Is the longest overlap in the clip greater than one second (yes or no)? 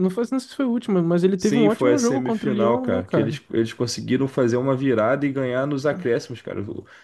yes